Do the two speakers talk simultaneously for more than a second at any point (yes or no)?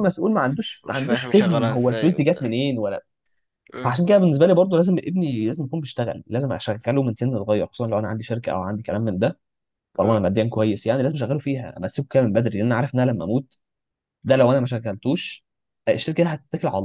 yes